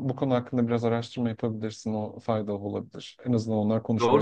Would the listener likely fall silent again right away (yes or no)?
no